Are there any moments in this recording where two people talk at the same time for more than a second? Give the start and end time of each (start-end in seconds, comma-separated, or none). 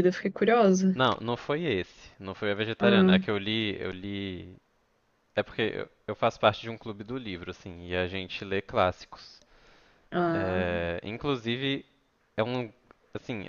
none